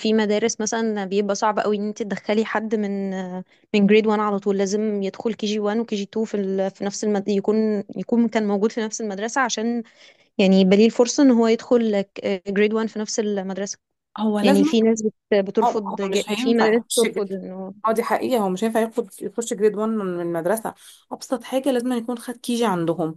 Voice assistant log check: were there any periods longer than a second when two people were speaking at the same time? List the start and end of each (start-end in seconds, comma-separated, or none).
15.6-17.2